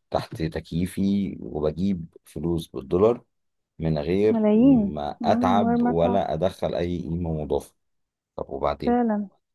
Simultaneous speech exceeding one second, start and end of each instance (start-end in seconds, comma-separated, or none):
4.3-6.3